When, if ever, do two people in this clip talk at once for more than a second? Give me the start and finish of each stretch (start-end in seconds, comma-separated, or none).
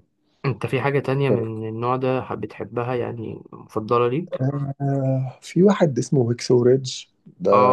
none